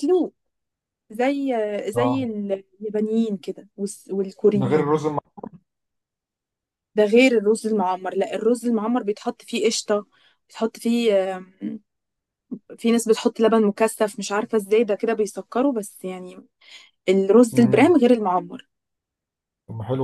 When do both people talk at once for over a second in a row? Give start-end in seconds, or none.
none